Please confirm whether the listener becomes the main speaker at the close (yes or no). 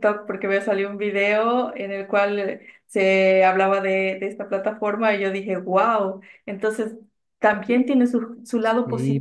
yes